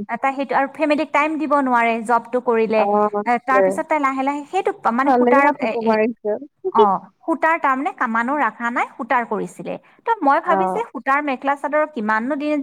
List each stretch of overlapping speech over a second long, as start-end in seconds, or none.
none